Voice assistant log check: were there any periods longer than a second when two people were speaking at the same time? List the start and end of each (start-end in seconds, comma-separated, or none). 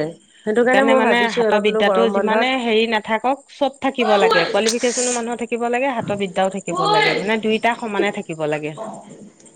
0.6-2.5